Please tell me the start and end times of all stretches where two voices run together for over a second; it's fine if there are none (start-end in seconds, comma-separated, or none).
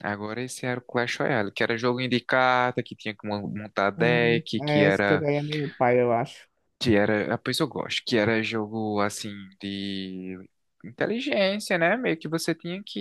4.0-5.3